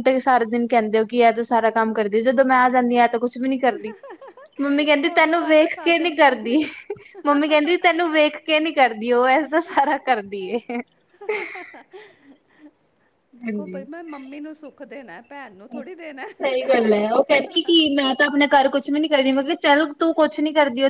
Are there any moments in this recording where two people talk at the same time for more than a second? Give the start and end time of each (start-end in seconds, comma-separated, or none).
5.0-6.5